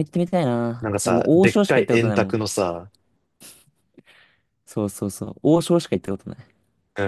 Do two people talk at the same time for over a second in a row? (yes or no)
yes